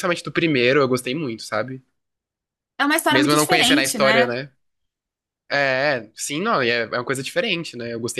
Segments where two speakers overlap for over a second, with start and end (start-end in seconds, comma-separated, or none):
3.1-4.3